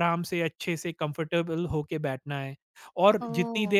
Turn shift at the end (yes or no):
yes